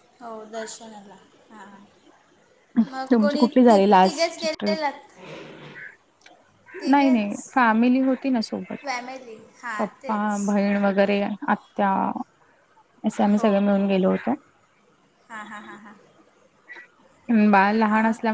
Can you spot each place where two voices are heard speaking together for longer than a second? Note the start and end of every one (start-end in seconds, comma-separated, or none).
3.1-4.8